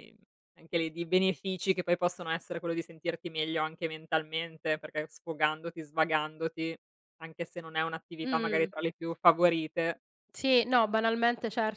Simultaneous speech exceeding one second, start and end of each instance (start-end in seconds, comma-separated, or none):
none